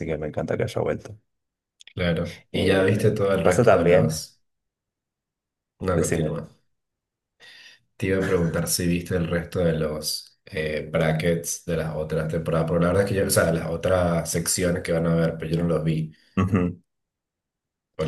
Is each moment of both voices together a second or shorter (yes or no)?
no